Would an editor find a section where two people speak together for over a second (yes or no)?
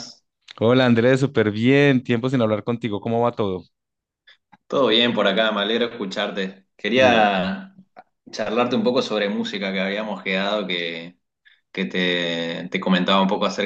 no